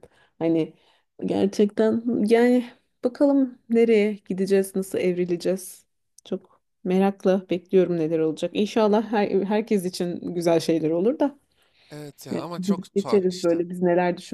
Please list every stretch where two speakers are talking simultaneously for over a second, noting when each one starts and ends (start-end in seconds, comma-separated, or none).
12.3-13.6